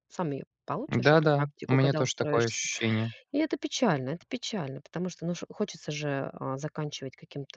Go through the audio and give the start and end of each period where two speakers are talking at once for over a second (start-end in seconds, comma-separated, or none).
0.9-2.6